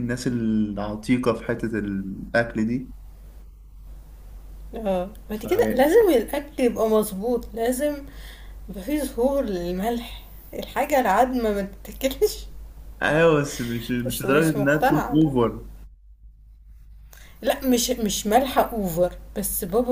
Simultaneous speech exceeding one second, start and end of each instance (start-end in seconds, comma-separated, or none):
14.1-15.3